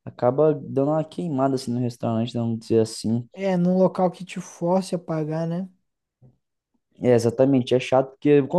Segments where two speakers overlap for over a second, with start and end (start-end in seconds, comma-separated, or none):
none